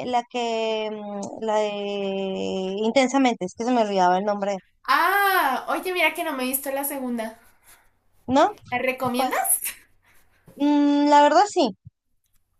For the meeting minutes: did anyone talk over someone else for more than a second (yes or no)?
no